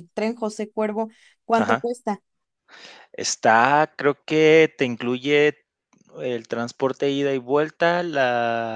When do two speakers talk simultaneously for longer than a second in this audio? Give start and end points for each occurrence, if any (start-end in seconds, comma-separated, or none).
none